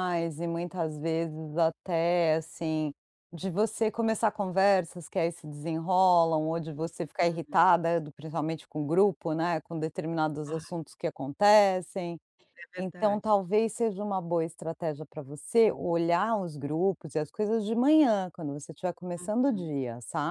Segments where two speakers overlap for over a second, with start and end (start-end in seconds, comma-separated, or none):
none